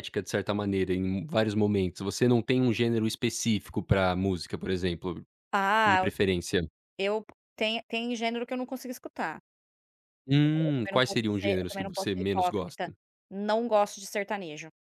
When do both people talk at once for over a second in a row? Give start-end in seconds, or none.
10.4-12.9